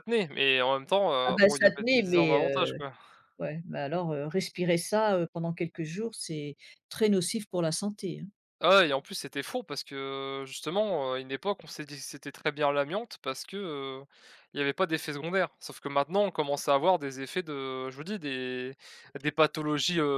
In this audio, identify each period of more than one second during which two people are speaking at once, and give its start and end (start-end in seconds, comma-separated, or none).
1.3-2.8